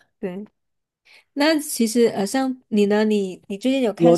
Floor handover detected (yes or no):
yes